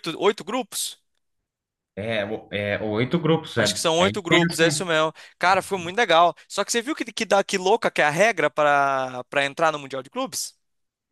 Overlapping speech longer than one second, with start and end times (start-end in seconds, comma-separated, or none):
3.6-4.9